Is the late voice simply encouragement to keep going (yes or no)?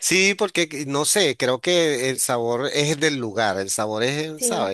no